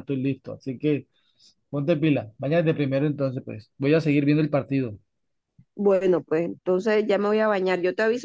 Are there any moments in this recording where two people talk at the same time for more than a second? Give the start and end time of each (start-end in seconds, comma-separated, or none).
none